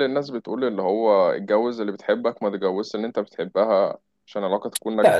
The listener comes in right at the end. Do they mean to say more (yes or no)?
yes